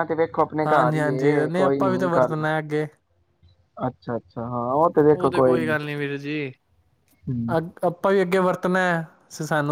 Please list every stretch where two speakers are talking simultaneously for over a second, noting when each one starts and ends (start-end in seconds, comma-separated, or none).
0.7-2.4